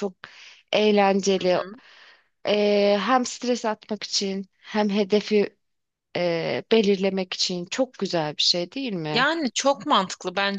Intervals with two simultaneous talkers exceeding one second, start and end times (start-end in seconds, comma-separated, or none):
none